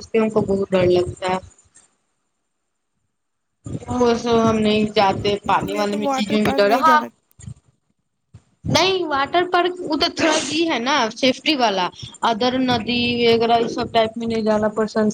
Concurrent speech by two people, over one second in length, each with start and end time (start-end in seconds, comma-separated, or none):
4.7-7.0